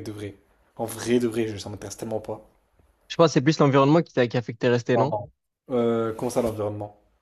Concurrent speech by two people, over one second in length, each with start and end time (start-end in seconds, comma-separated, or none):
none